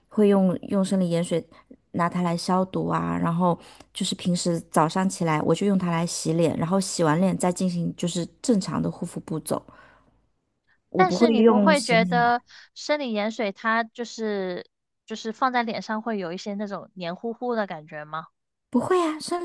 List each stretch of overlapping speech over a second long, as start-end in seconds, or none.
10.9-12.3